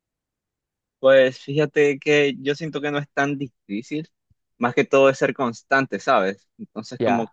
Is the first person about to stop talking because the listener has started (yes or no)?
no